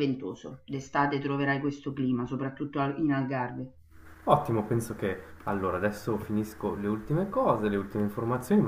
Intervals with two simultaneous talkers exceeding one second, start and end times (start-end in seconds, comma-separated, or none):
none